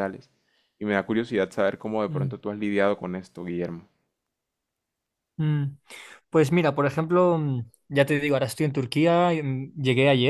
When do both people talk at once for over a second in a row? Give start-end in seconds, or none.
none